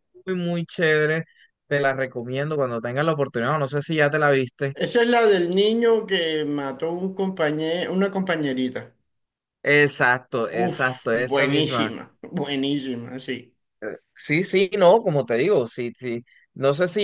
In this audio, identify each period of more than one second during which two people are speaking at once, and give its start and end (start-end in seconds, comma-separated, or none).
10.5-11.9